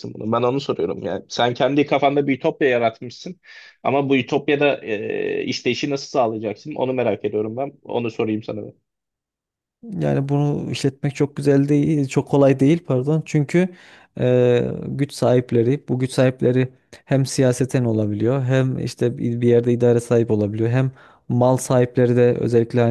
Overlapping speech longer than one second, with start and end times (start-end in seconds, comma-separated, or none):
none